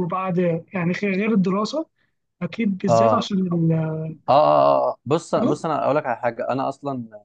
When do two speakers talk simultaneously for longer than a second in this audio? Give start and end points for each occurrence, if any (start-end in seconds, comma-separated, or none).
none